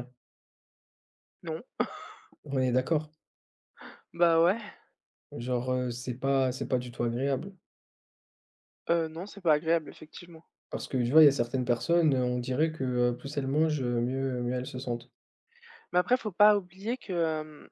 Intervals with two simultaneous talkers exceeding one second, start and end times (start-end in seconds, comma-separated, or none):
none